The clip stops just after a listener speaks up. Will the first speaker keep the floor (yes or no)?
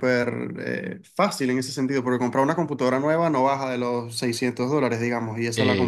yes